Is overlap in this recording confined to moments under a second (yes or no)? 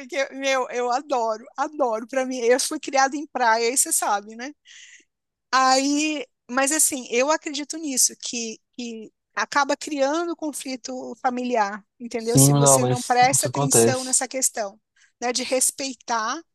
no